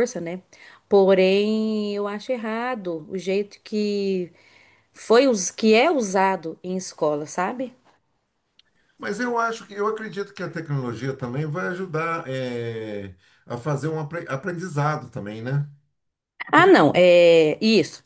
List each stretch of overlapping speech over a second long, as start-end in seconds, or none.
none